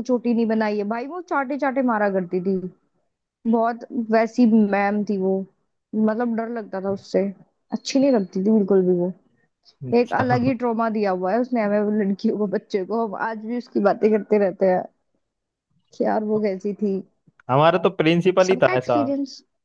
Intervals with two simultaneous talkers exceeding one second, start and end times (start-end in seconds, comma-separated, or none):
none